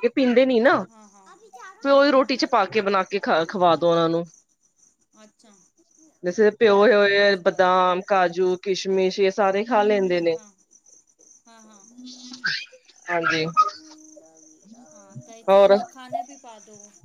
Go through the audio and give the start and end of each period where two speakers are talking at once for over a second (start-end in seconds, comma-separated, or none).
6.6-7.8